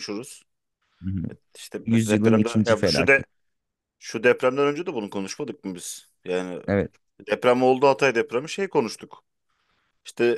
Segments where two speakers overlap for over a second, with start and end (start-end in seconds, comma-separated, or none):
1.9-3.2